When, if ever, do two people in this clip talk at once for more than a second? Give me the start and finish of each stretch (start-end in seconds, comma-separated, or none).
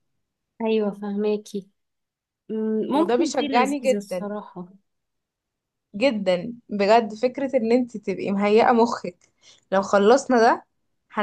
3.0-4.3